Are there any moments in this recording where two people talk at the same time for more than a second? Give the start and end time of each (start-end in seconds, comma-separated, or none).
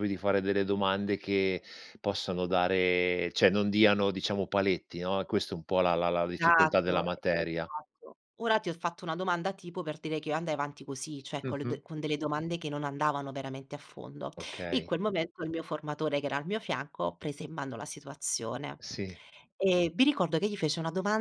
6.4-7.7